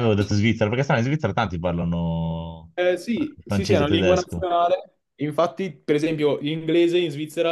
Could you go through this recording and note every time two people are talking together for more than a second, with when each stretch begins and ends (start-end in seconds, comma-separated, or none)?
3.1-4.4